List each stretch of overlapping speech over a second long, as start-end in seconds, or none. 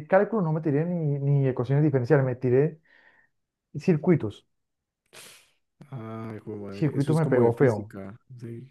6.7-7.9